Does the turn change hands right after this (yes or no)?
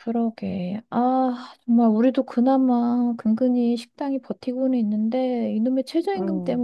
no